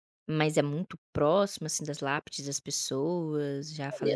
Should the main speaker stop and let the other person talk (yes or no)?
yes